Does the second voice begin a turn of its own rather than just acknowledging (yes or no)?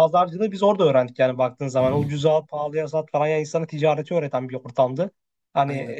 no